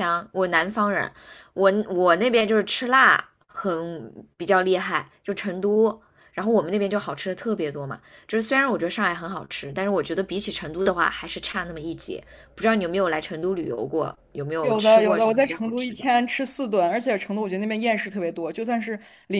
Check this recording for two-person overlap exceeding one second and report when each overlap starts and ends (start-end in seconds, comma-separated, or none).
14.6-16.1